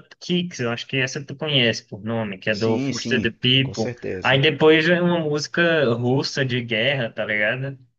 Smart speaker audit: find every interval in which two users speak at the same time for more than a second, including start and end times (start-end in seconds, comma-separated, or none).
2.5-4.4